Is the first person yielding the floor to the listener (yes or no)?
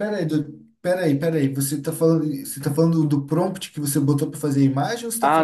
yes